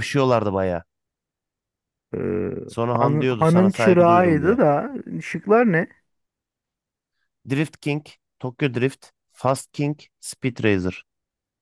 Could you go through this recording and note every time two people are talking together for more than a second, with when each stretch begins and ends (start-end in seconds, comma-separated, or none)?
3.0-4.6